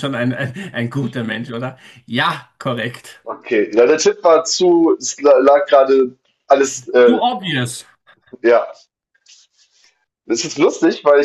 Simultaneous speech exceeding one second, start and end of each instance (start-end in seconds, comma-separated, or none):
none